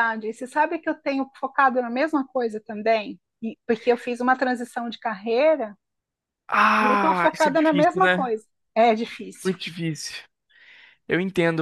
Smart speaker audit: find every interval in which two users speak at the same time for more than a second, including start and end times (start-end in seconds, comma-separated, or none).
6.8-8.3